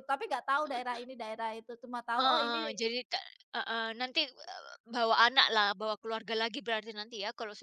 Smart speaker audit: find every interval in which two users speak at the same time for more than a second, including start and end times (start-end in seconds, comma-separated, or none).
none